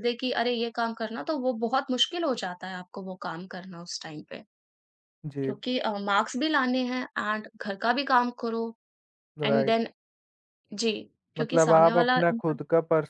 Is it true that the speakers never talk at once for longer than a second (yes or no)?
no